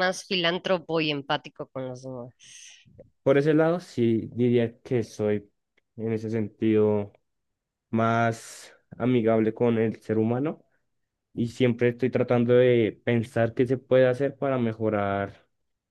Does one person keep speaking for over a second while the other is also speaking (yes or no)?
no